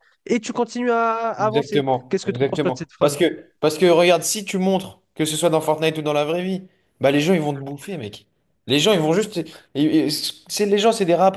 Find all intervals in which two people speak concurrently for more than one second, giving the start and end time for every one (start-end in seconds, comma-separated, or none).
1.4-3.2